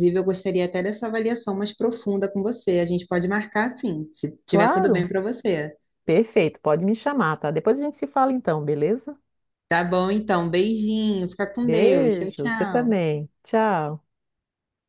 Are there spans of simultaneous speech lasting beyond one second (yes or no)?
yes